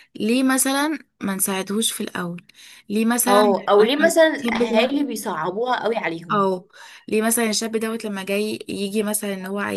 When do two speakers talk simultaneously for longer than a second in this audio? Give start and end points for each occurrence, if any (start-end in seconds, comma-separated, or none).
3.3-5.0